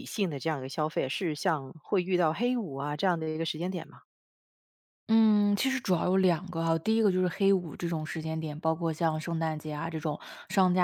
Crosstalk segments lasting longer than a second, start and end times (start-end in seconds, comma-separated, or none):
none